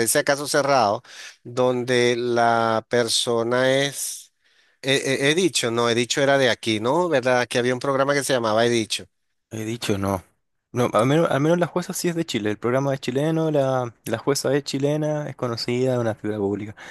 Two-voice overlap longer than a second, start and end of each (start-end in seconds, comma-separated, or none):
none